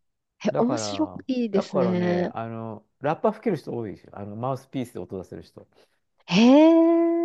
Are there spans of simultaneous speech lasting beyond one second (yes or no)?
yes